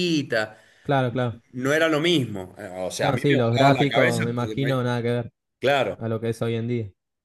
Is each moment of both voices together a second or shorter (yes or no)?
no